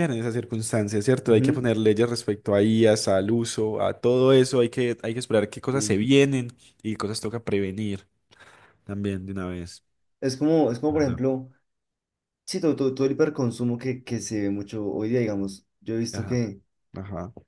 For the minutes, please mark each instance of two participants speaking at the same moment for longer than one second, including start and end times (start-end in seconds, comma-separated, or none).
none